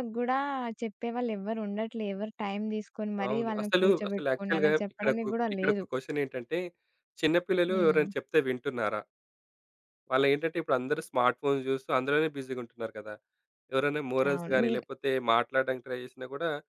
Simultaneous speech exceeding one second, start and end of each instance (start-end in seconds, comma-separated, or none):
3.3-5.8